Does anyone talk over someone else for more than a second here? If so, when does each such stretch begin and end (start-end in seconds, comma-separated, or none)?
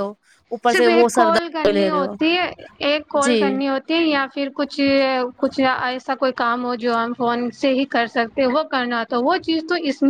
0.7-2.1